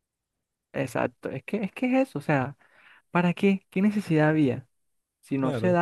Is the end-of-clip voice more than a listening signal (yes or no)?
no